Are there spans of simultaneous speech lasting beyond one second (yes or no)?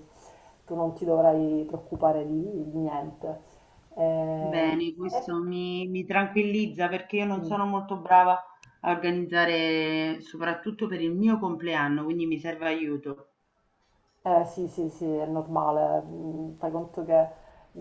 no